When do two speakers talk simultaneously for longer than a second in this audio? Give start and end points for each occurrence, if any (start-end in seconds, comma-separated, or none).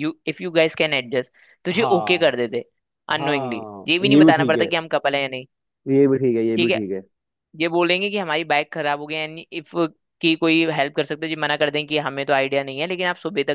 3.2-4.7